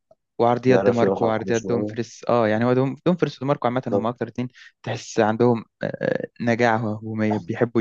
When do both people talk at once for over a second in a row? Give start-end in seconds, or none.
0.7-1.9